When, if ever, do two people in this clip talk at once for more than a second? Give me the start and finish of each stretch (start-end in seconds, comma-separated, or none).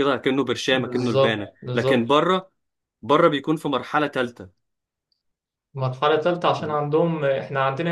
0.7-2.1